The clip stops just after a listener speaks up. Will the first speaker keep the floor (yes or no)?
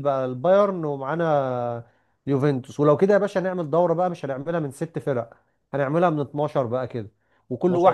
yes